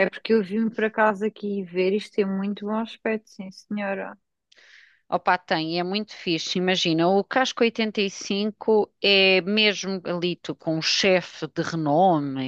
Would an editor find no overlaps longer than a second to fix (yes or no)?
yes